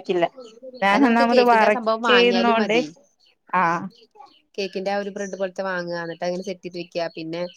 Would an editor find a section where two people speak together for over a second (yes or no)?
yes